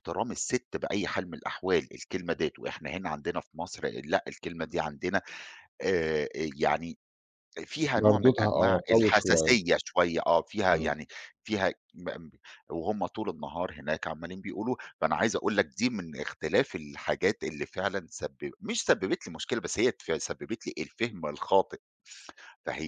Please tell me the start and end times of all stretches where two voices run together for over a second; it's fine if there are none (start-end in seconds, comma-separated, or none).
8.0-9.6